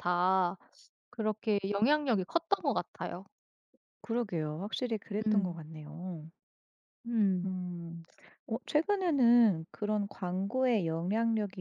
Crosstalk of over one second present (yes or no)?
no